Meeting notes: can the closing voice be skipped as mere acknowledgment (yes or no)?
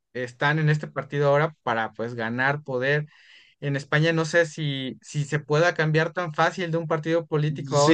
no